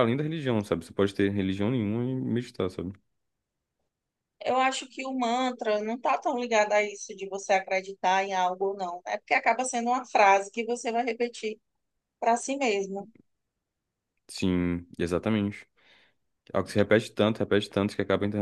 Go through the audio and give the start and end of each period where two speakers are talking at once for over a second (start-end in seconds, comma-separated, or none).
none